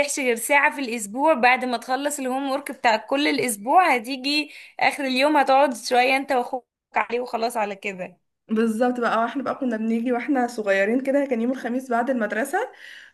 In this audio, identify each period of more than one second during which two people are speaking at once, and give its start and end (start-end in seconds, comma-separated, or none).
none